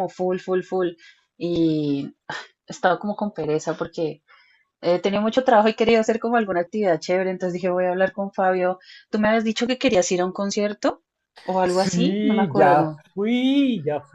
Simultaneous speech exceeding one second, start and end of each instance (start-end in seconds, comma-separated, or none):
11.6-13.0